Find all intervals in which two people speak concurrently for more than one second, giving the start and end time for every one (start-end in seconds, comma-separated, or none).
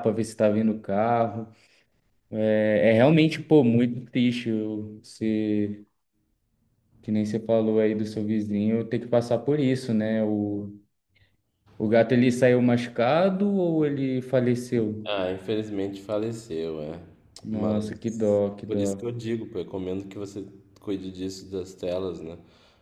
17.5-19.1